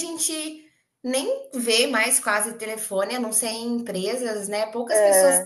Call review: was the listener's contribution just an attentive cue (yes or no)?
yes